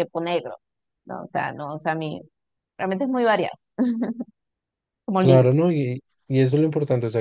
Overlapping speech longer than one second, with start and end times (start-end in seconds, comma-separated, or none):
none